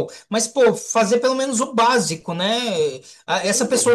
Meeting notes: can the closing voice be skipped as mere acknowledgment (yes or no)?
yes